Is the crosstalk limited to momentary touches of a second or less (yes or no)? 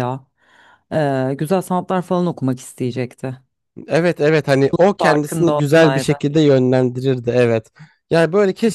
no